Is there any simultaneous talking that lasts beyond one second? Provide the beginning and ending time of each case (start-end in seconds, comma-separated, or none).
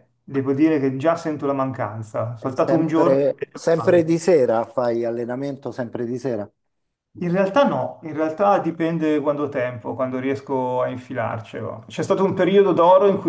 2.5-4.2